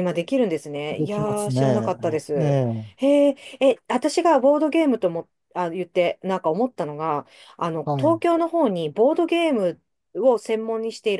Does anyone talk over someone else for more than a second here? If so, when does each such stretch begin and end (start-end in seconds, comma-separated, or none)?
0.9-2.6